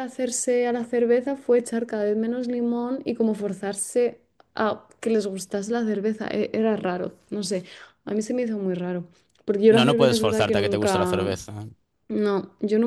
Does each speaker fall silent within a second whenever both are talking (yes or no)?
no